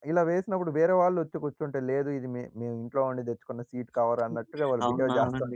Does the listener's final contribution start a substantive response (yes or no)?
yes